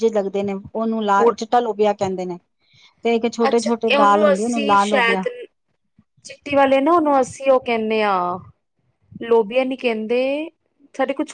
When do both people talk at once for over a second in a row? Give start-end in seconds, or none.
3.5-5.2